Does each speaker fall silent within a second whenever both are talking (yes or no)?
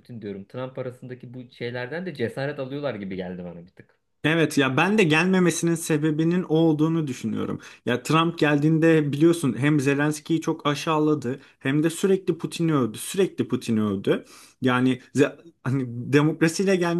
yes